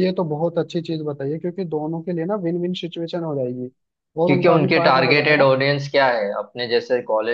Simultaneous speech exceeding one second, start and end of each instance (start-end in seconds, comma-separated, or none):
4.2-5.5